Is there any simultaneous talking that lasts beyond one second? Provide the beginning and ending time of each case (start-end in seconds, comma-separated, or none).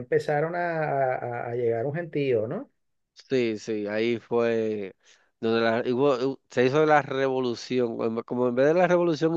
none